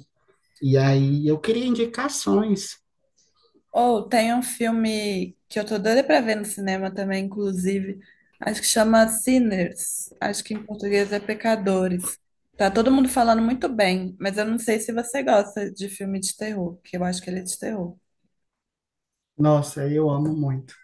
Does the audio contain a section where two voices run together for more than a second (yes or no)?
no